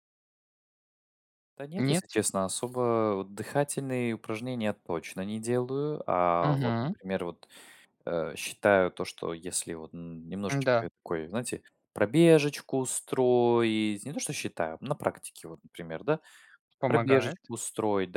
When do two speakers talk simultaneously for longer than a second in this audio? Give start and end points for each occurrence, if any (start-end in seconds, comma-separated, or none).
none